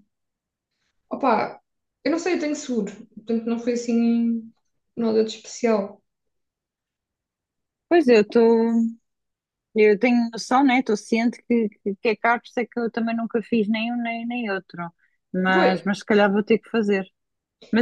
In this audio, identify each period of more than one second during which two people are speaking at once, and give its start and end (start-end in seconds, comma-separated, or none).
none